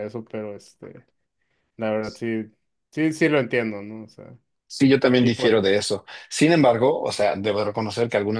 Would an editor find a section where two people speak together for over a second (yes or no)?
no